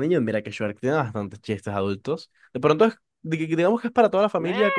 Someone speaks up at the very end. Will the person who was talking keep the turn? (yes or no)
yes